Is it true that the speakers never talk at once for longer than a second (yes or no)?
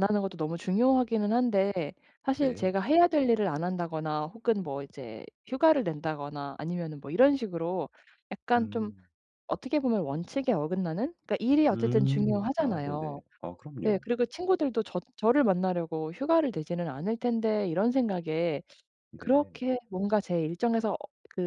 no